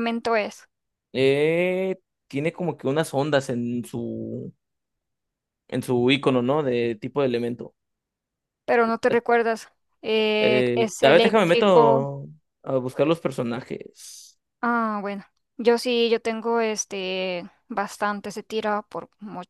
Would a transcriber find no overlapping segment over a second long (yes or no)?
no